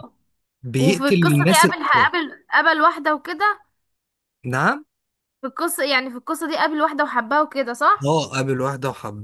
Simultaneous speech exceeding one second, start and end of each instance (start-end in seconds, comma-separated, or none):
0.8-2.1